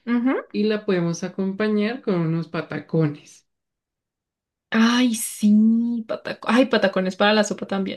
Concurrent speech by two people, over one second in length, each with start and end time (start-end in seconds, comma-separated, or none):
none